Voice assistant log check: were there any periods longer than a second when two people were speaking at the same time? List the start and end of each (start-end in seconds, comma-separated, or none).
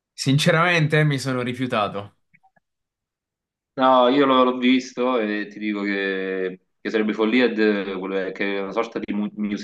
none